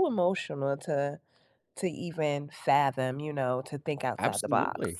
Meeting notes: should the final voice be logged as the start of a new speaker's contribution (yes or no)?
yes